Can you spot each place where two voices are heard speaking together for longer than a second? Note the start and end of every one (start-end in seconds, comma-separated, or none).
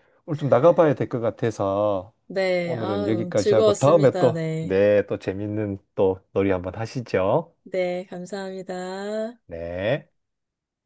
2.6-4.8